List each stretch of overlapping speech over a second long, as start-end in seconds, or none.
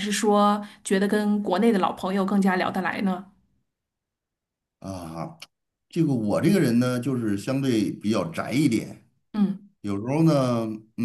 none